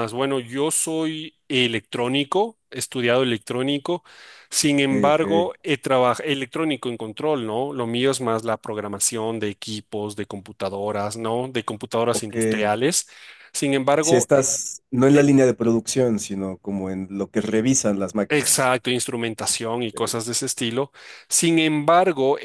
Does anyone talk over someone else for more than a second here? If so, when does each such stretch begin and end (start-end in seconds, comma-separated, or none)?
none